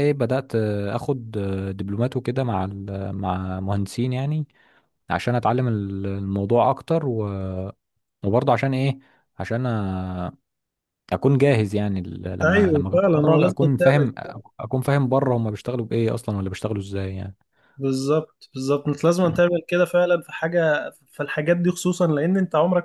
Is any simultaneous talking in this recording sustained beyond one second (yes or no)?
yes